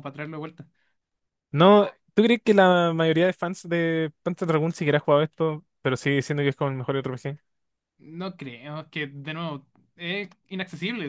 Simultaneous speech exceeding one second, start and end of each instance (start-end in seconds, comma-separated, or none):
none